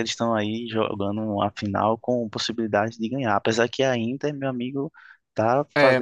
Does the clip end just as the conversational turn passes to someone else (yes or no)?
yes